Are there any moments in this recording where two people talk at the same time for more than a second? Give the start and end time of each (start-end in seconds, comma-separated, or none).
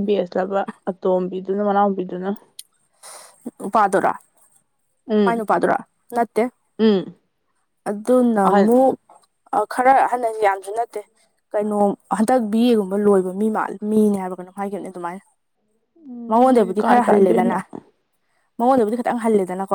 16.3-17.6